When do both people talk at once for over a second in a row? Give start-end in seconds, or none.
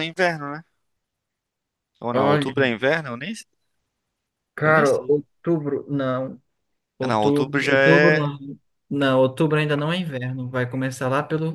7.1-8.3